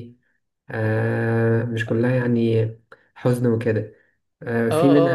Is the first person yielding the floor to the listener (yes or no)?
yes